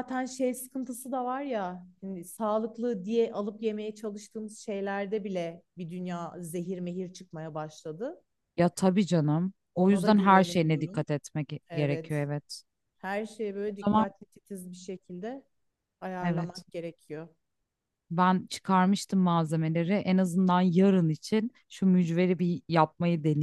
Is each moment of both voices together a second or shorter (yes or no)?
no